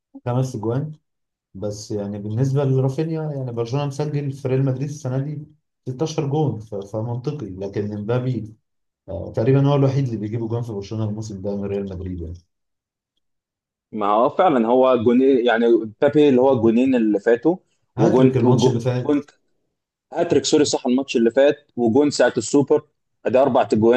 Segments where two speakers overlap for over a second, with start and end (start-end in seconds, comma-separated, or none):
18.0-19.3